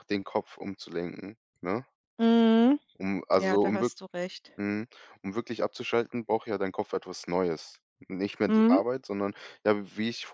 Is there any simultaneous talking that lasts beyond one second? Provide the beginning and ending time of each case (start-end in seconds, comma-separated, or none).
none